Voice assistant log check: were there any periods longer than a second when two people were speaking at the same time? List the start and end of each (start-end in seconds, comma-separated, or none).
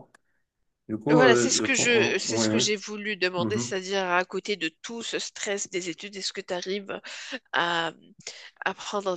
1.1-2.6